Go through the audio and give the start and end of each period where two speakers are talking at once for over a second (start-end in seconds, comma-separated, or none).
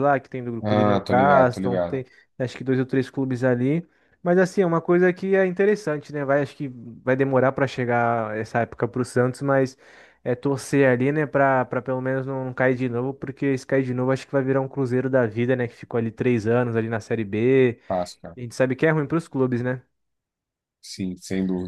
0.6-2.0